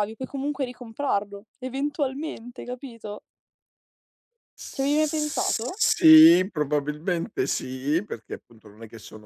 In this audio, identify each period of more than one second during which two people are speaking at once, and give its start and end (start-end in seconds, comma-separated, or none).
none